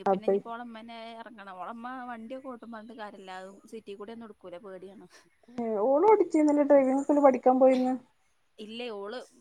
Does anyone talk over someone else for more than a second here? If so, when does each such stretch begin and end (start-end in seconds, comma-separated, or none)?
none